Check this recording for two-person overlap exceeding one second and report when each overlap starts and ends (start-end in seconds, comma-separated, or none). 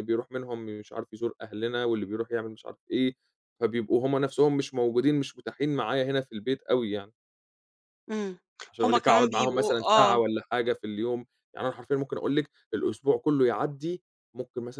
8.8-10.2